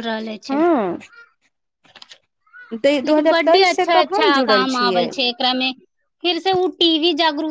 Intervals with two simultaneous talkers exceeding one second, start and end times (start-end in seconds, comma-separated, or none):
3.1-5.1